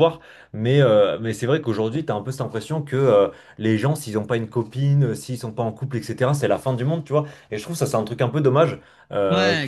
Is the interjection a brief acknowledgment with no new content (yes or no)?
yes